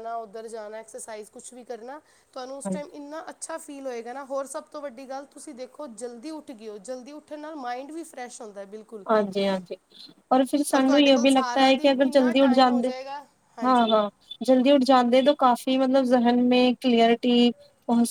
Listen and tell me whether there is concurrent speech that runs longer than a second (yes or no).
yes